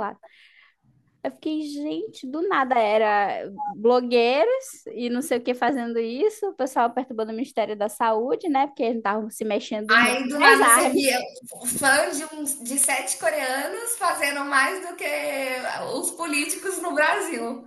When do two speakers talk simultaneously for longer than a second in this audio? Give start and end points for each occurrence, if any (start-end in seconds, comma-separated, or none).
9.9-11.2